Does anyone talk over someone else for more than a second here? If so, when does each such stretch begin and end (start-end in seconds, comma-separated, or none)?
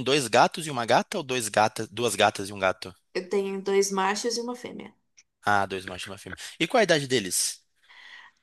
none